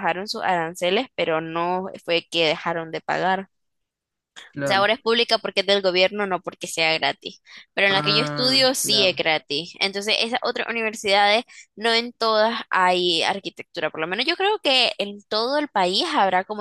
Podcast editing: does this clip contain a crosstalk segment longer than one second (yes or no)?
yes